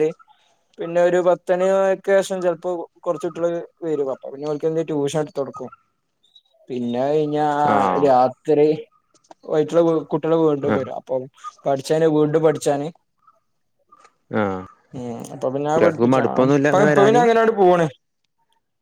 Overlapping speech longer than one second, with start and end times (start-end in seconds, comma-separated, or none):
15.7-17.2